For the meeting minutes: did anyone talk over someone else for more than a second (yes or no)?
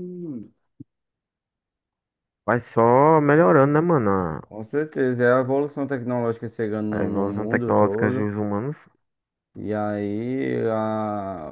yes